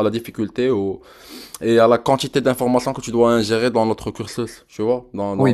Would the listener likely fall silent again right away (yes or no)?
no